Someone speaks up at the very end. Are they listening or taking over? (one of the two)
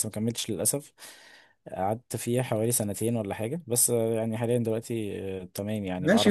taking over